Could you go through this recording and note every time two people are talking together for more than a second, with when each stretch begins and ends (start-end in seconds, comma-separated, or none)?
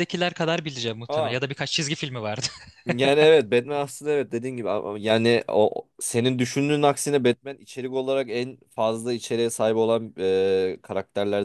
none